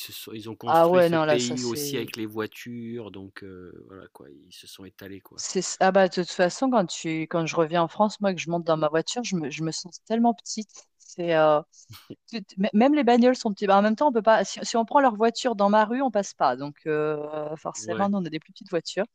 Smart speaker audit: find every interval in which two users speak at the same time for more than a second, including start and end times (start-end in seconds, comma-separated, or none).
0.7-2.1